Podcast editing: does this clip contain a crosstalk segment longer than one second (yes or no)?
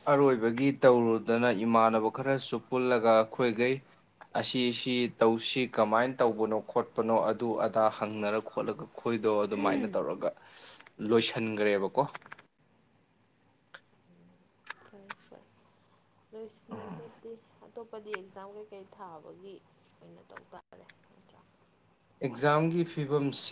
no